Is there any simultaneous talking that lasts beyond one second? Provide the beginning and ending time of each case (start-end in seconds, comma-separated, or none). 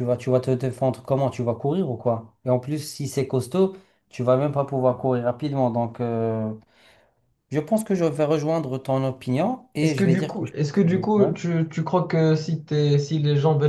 9.8-11.3